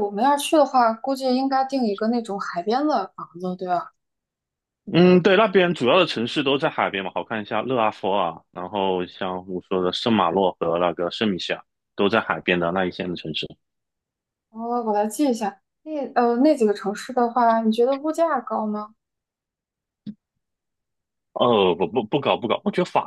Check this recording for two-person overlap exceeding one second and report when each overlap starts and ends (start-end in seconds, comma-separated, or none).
none